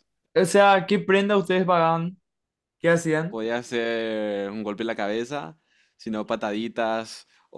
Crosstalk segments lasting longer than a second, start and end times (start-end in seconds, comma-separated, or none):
none